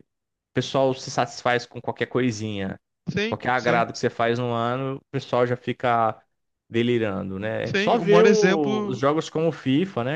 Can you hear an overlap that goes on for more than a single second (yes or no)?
yes